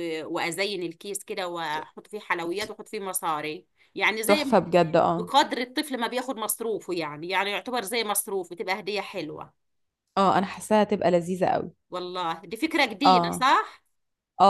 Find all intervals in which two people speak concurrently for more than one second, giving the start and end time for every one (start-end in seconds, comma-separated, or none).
none